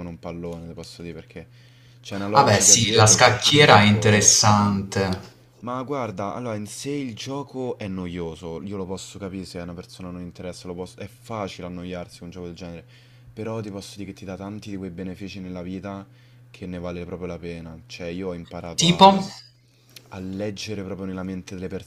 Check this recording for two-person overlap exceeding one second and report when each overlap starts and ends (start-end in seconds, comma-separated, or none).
2.3-4.3